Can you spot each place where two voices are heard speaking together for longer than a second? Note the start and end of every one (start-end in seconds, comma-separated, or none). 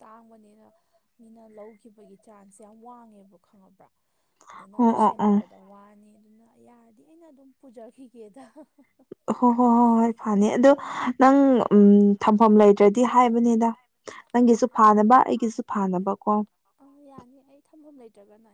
none